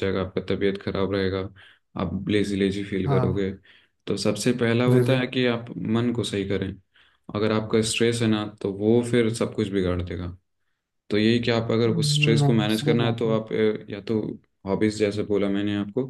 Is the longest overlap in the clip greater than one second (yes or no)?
yes